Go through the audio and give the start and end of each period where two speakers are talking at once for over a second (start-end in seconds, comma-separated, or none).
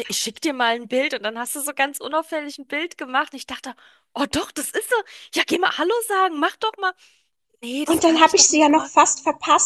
7.9-9.1